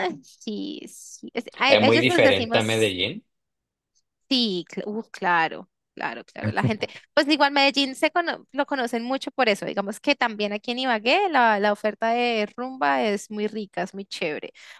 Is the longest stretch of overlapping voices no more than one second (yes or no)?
no